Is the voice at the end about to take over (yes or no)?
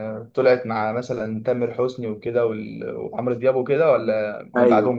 yes